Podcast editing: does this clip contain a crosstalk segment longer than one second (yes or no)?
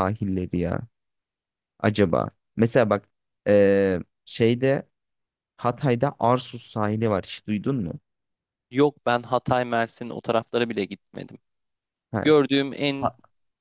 no